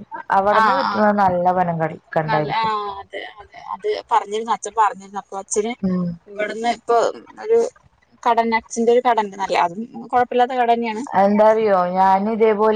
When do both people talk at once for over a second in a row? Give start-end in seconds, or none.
none